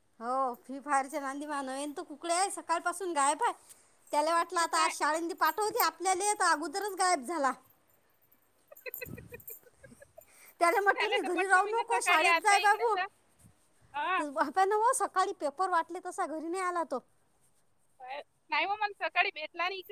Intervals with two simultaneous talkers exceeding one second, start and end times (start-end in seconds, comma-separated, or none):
11.2-12.9